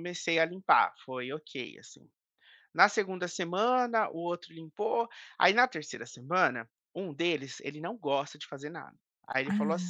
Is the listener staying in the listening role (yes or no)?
yes